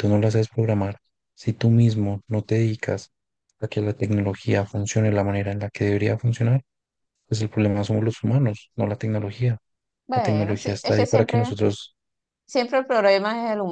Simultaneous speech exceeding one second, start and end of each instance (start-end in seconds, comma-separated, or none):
10.1-11.5